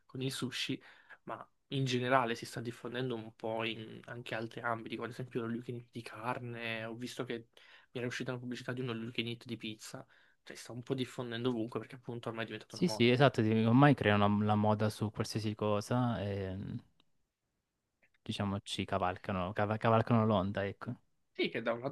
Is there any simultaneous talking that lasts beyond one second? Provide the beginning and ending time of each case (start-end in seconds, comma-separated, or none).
none